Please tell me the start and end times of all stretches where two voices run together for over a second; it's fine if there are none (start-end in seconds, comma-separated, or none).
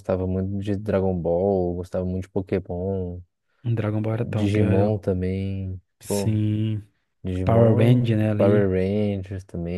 7.4-8.7